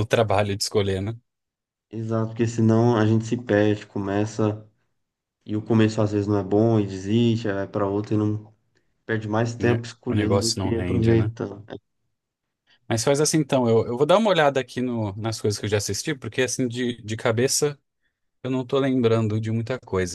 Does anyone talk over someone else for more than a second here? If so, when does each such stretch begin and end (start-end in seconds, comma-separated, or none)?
9.6-11.3